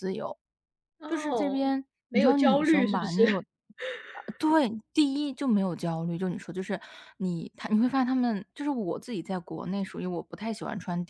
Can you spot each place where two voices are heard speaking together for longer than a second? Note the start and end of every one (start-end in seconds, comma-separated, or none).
1.1-3.2